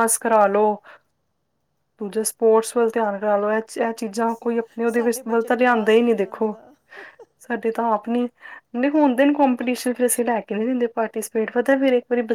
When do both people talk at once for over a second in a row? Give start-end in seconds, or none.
4.9-6.5